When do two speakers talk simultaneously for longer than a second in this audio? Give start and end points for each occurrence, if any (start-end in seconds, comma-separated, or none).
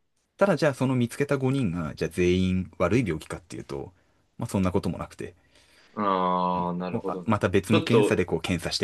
6.5-8.2